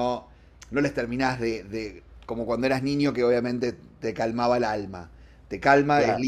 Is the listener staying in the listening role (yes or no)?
yes